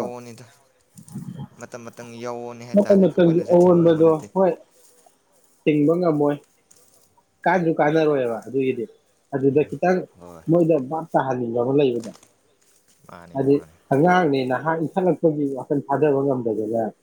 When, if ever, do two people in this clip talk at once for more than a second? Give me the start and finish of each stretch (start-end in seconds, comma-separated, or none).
2.7-4.3